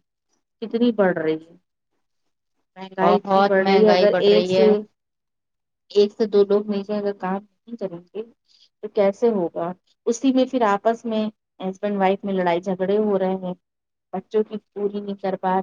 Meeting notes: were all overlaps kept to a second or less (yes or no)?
no